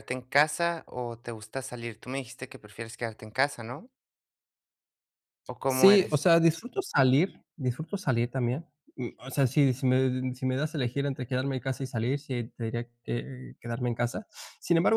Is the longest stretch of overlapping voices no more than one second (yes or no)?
yes